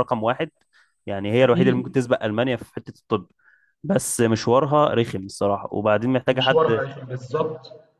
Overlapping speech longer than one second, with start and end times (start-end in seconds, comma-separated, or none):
none